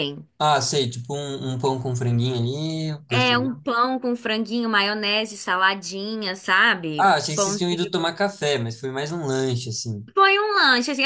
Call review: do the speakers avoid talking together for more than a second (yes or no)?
yes